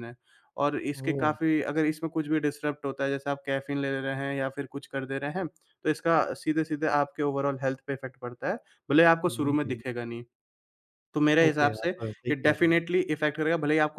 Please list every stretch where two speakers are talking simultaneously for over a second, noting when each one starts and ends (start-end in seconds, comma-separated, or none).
11.5-12.8